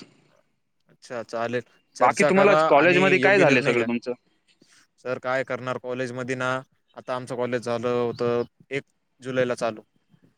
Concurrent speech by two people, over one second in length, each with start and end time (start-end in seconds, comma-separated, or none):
2.0-3.9